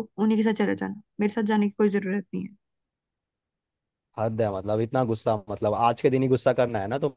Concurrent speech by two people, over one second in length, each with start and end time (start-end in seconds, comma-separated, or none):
none